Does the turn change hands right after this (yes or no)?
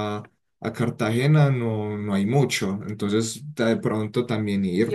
yes